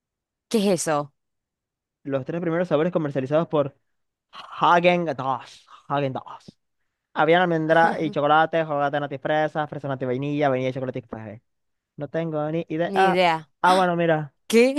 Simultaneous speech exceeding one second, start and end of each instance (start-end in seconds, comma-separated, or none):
none